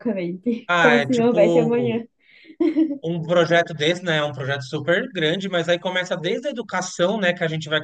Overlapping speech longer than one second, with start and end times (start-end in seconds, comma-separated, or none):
0.7-2.0